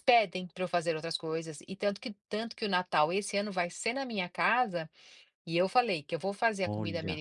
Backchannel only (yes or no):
yes